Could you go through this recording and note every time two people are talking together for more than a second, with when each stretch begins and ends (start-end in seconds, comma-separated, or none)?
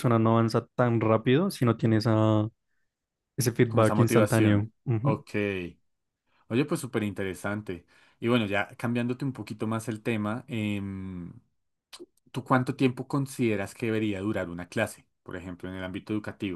3.6-5.2